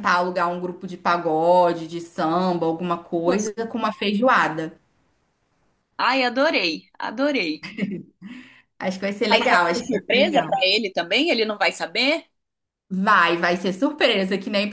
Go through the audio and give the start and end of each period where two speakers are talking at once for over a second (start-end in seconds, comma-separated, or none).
9.3-10.6